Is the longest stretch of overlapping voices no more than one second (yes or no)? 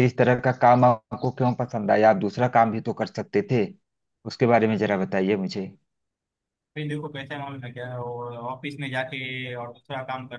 yes